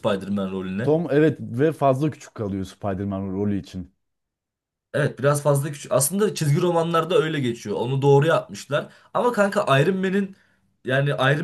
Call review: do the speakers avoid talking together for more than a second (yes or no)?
yes